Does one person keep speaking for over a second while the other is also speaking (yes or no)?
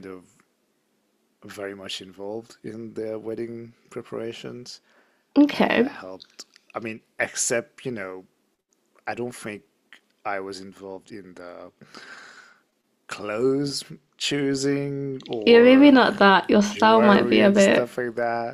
yes